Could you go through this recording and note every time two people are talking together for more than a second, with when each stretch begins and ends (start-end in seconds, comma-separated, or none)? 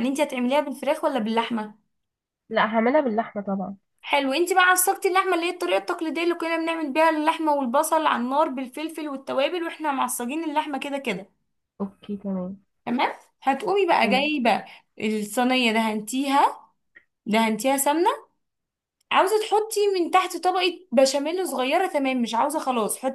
none